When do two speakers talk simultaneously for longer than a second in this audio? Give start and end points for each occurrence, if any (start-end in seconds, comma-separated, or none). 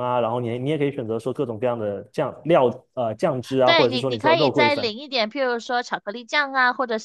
3.6-4.9